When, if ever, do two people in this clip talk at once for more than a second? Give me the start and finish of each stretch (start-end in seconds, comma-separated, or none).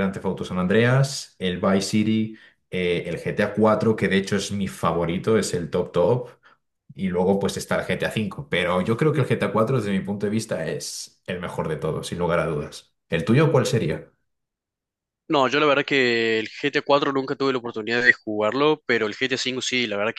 none